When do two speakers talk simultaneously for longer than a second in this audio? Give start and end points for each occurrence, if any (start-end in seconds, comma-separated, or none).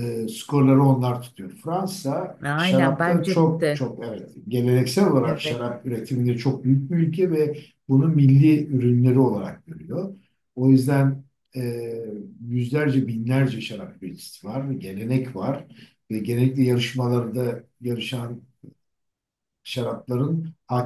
2.4-3.9